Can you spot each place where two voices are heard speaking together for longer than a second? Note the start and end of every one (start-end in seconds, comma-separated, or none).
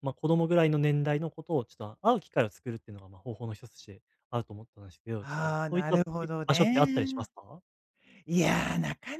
5.2-7.3